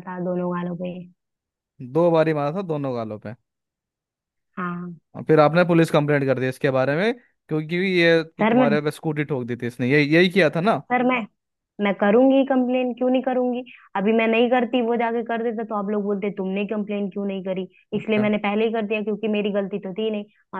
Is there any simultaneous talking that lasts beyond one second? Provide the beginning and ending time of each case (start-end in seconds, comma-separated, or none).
none